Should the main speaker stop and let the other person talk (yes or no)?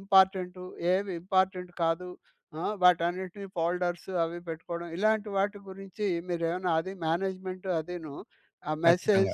no